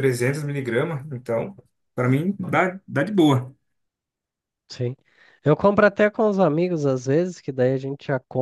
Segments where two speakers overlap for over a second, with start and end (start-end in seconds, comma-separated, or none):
none